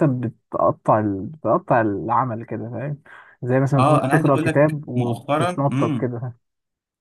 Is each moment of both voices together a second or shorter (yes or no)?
no